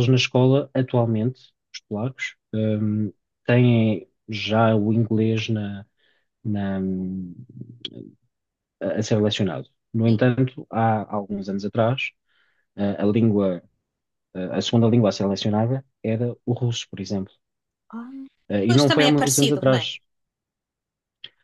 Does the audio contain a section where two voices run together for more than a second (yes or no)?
yes